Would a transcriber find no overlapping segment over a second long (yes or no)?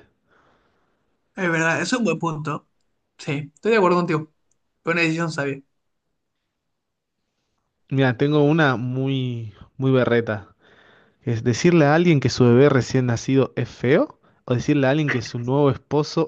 yes